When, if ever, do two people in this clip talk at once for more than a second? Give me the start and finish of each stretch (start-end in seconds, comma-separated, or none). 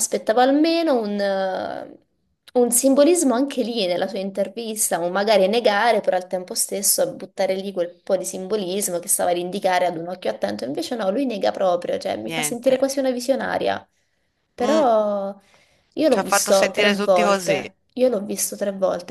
16.1-17.6